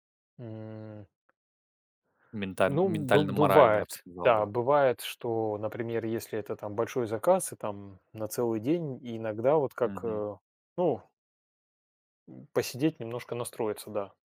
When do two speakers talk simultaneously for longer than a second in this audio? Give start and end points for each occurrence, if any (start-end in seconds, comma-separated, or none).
2.7-4.5